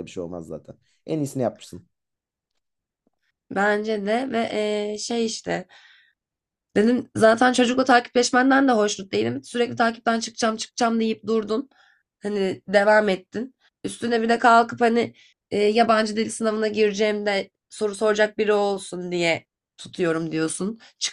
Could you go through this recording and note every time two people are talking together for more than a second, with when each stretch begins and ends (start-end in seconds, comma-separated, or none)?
none